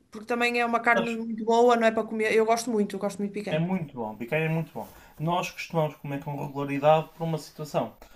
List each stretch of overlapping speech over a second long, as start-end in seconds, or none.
none